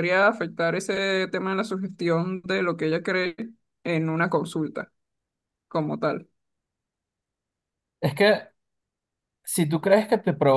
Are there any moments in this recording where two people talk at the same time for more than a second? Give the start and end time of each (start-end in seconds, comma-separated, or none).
none